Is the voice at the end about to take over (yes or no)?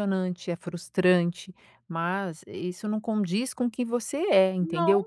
no